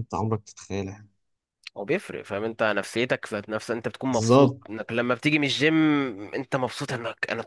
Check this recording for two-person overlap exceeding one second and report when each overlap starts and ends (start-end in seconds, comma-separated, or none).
none